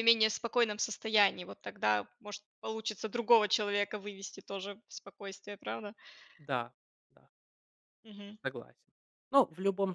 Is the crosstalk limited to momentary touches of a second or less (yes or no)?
yes